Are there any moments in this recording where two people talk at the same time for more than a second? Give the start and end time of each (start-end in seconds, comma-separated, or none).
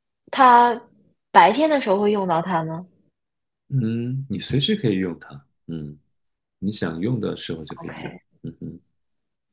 none